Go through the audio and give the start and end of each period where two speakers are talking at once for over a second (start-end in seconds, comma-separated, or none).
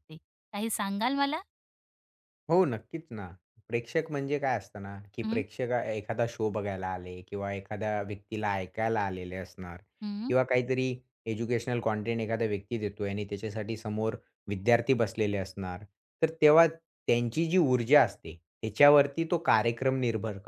none